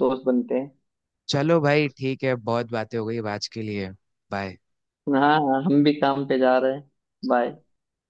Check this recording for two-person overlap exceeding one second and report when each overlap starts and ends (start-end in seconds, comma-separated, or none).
none